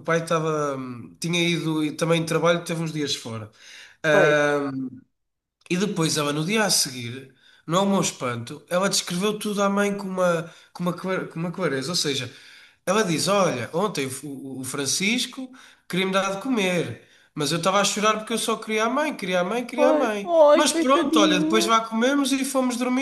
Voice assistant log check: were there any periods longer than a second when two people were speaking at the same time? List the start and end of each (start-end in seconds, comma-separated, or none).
19.7-21.8